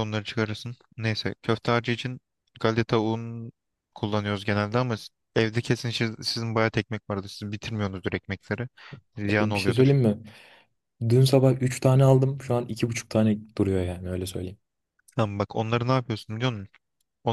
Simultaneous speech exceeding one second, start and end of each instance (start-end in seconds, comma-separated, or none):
none